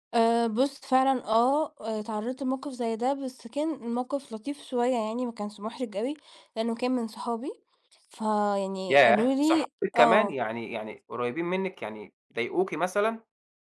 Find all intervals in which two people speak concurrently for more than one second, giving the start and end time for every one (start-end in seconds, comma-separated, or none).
8.9-10.4